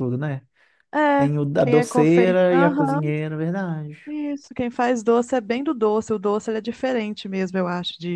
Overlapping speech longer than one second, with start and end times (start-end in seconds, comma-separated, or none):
1.1-3.1